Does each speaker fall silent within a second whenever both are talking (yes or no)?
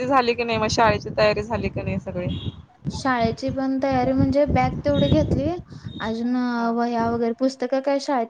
yes